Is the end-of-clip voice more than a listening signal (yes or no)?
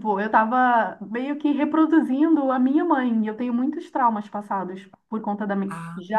no